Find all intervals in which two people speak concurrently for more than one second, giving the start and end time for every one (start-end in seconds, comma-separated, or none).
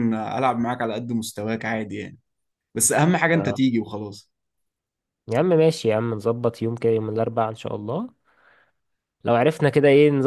none